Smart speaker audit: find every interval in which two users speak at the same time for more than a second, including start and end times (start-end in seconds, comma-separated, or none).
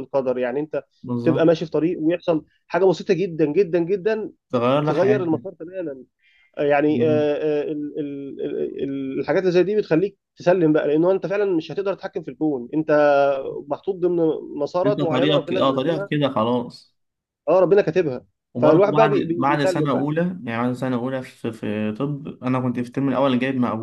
14.8-16.1, 18.6-20.1